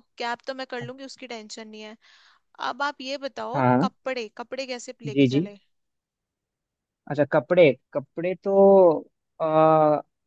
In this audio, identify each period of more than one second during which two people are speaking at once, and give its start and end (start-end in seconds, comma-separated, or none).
none